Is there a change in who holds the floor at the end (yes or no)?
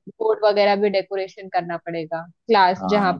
no